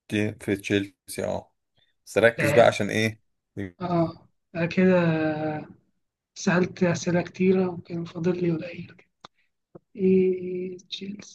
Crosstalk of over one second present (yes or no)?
no